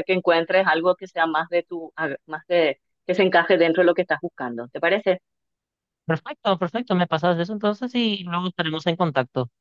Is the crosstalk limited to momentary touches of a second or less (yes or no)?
yes